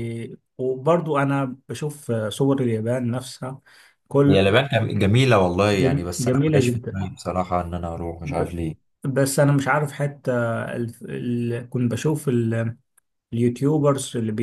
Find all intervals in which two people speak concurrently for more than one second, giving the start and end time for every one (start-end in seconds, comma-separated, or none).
5.7-7.0